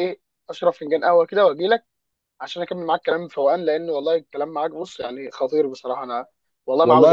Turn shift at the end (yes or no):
yes